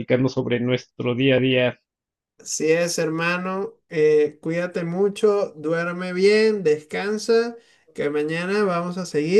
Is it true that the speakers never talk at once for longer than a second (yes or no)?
yes